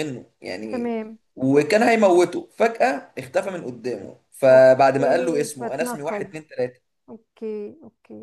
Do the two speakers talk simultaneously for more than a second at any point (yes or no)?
yes